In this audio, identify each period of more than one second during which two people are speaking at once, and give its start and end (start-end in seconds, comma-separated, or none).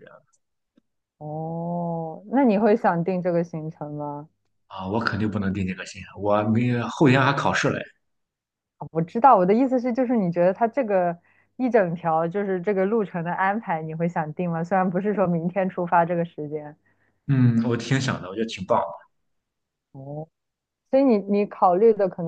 none